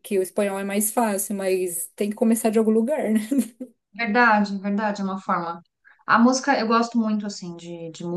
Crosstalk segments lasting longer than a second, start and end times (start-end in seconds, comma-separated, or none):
none